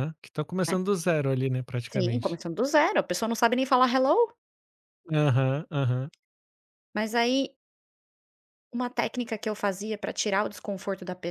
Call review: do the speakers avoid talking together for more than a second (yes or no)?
yes